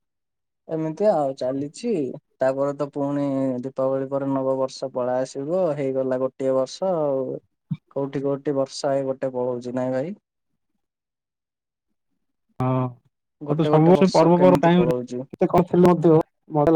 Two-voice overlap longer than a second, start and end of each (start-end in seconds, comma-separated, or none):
13.5-15.2